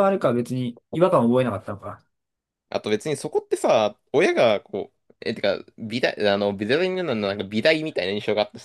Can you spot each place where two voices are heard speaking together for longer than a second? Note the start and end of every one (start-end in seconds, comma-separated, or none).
none